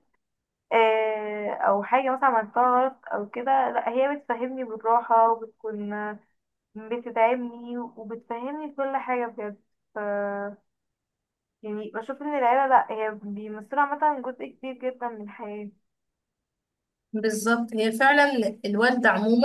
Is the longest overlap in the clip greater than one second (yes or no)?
no